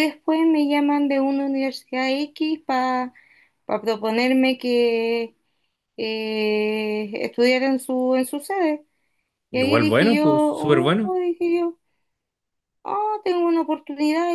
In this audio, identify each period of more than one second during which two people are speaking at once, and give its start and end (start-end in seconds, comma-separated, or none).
9.5-11.2